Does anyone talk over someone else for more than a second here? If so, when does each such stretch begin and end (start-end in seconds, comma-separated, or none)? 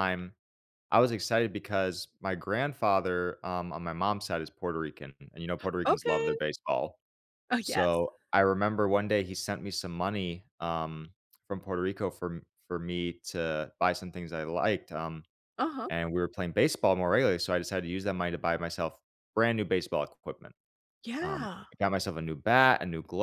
none